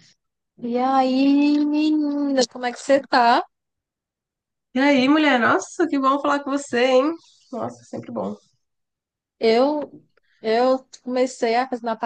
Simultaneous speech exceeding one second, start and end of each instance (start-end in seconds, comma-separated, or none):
none